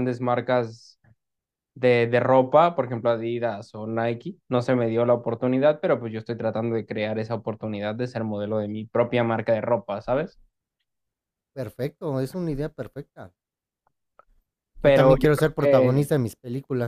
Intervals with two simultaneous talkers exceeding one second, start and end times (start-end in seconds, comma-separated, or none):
14.8-16.1